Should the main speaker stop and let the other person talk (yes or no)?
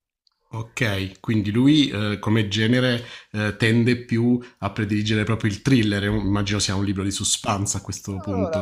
yes